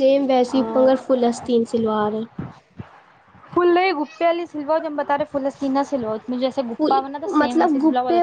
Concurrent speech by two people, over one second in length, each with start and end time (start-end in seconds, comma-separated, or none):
none